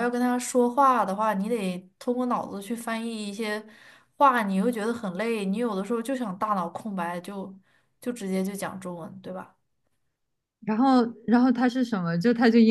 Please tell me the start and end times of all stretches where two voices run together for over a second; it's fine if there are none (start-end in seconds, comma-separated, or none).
none